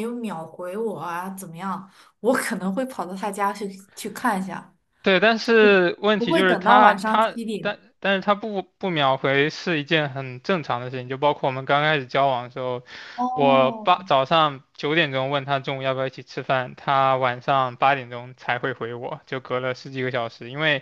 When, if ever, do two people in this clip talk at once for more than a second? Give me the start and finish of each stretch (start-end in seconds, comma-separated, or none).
6.2-7.7